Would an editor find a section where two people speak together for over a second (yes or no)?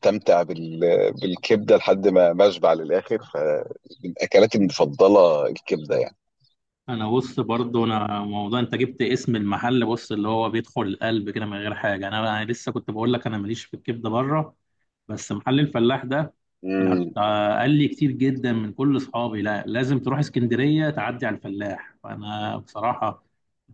no